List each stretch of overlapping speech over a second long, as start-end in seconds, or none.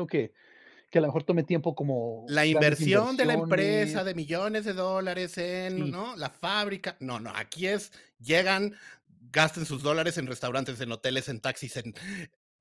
2.3-4.1